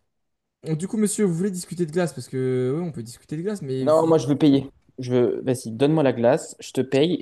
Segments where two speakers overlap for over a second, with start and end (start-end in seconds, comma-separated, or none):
none